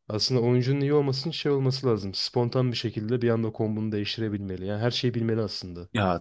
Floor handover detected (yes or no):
yes